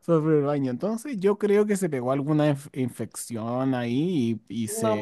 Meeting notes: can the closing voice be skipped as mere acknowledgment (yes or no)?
yes